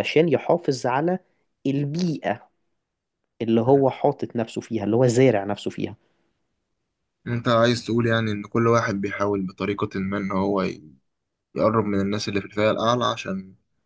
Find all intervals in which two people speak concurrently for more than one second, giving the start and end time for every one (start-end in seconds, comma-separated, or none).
none